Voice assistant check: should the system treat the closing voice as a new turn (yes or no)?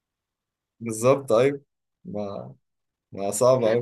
yes